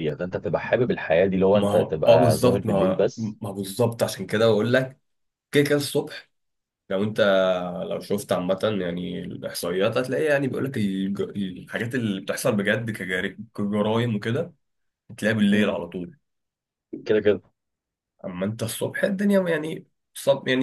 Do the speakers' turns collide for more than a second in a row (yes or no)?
yes